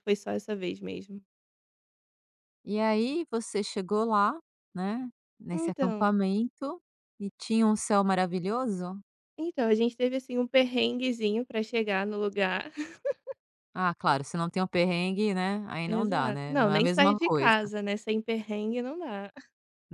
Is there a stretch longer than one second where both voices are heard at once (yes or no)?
yes